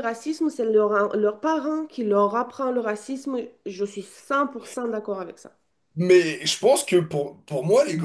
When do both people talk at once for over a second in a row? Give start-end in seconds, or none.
none